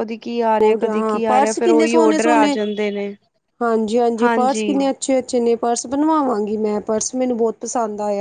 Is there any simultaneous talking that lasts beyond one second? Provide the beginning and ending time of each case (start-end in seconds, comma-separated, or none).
0.6-2.6